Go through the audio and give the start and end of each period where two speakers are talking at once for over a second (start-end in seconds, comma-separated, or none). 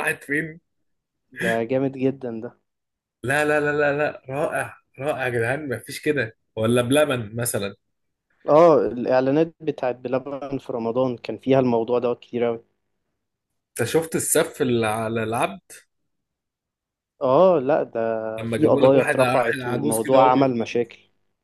18.4-20.5